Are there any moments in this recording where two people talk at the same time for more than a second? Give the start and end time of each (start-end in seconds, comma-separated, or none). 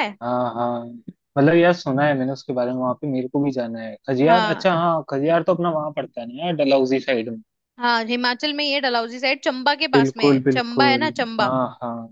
9.9-11.5